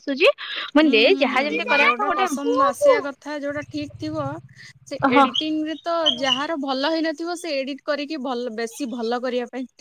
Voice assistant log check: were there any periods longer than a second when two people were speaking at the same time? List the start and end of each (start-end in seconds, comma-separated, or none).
0.8-2.9